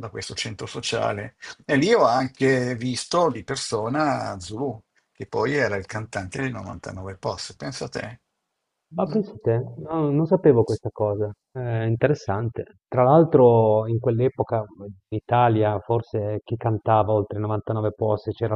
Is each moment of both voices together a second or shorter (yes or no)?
yes